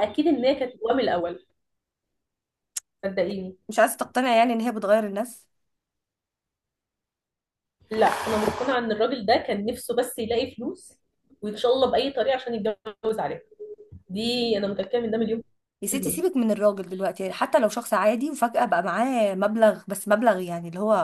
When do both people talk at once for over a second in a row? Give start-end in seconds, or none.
none